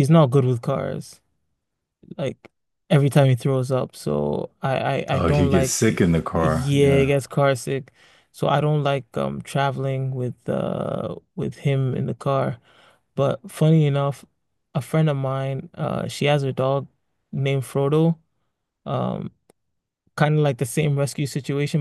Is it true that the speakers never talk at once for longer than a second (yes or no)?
no